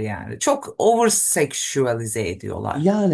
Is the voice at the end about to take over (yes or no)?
yes